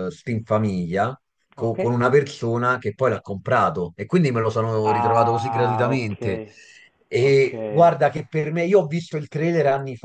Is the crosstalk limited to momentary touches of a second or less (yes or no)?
no